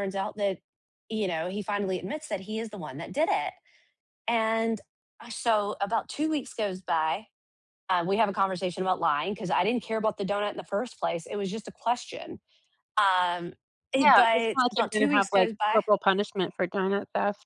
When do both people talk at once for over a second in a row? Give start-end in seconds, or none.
14.0-15.8